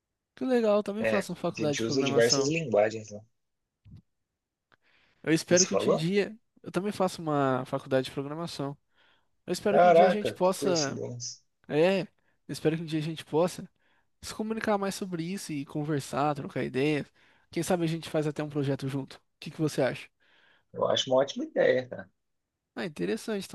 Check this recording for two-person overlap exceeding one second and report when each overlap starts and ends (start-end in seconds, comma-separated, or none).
1.0-2.5, 9.7-11.0